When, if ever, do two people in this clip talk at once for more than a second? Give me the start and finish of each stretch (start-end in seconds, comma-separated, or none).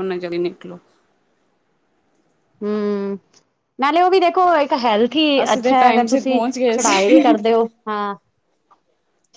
5.4-7.4